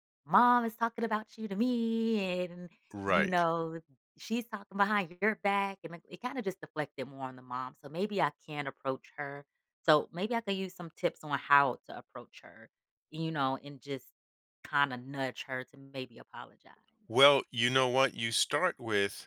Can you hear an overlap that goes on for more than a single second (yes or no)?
no